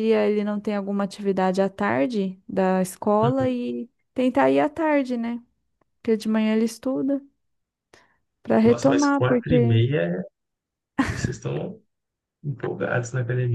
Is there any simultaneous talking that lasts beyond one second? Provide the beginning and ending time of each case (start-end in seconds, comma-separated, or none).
8.6-9.8